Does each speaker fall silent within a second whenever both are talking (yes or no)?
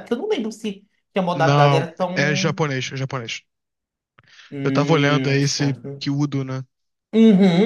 no